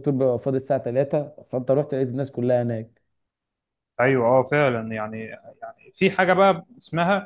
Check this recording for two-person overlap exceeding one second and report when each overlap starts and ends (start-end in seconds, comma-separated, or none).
none